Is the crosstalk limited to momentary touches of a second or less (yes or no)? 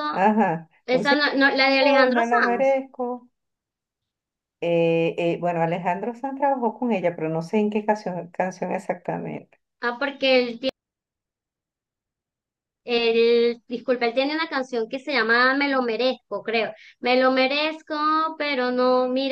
no